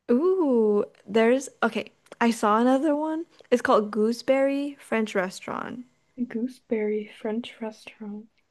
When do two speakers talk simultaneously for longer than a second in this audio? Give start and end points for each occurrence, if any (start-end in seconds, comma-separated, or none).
none